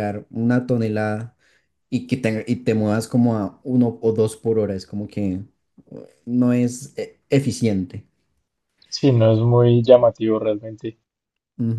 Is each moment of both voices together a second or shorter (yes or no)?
yes